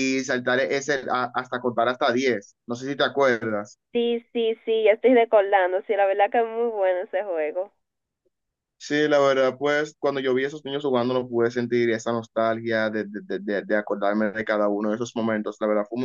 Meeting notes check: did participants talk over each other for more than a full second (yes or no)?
no